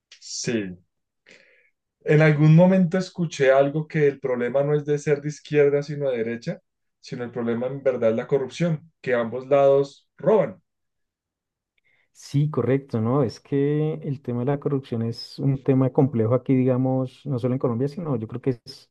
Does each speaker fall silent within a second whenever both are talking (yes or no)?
yes